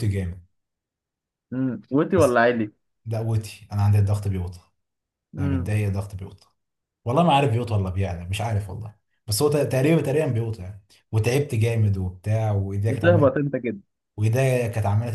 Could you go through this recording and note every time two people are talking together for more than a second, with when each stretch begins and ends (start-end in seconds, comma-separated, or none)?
none